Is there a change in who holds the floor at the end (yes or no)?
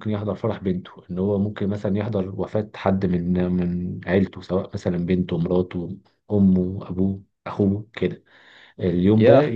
no